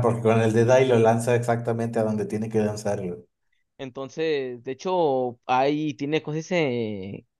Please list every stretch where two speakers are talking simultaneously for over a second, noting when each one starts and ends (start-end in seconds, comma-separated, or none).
none